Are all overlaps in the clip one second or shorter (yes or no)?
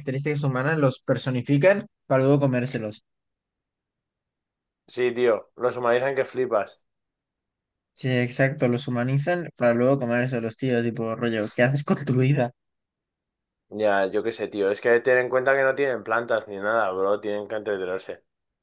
yes